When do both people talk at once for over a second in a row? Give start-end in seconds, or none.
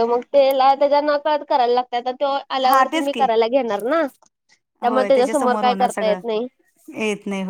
4.9-6.2